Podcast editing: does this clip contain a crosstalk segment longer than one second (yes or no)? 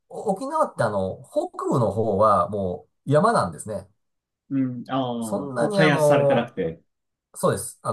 yes